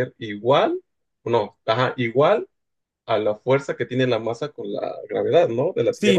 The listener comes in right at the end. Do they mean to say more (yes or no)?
yes